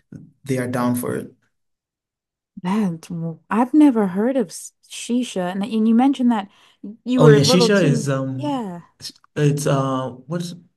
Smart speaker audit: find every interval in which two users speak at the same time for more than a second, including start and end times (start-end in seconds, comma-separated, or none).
7.2-8.6